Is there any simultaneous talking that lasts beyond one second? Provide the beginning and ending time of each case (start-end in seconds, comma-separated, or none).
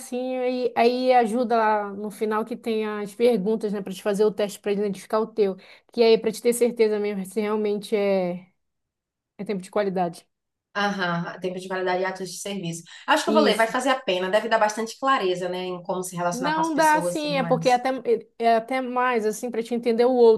16.3-17.8